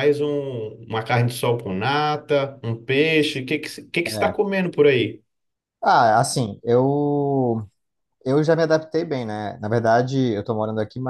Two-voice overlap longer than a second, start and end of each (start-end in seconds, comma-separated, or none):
none